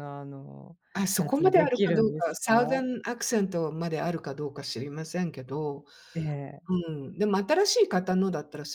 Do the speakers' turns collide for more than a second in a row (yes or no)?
yes